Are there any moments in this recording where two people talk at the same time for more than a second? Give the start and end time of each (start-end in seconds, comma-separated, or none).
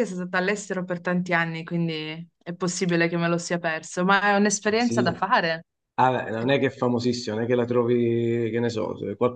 none